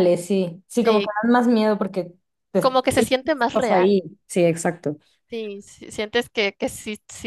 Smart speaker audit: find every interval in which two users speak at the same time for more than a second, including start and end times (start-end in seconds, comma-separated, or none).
2.6-4.0